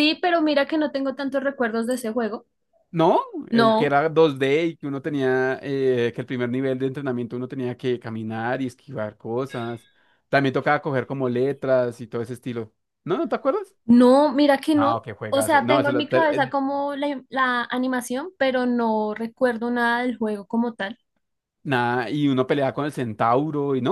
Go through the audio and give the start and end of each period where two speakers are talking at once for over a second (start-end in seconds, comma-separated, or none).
14.7-16.5